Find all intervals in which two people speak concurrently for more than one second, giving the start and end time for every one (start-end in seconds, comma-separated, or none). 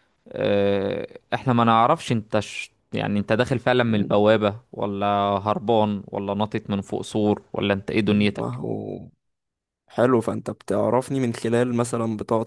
none